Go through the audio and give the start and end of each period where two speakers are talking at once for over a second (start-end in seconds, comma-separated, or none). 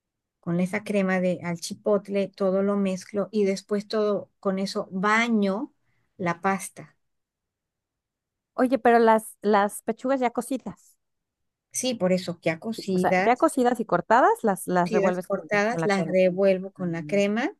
14.8-16.1